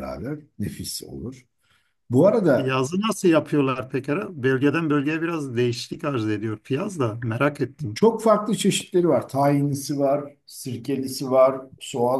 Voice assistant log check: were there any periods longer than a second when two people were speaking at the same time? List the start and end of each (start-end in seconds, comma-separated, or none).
none